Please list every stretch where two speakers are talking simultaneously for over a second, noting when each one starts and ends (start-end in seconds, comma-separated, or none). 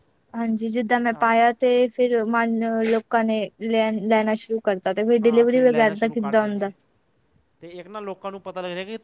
5.2-6.7